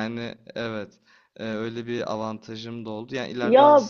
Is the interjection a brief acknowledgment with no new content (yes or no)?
yes